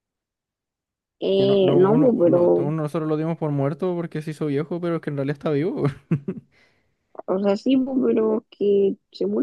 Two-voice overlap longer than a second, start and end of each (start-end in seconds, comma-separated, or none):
1.4-2.7